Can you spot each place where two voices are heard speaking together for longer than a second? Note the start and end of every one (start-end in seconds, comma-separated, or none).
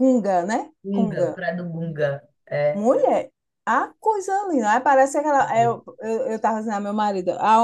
none